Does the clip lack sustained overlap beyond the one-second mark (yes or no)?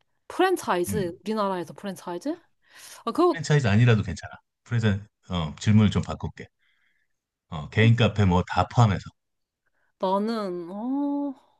yes